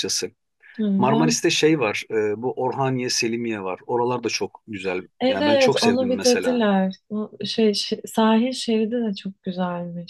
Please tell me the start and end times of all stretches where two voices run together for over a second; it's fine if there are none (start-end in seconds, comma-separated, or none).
5.2-6.6